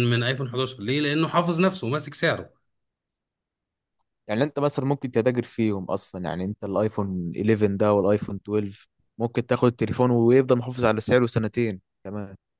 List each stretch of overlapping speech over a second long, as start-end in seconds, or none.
none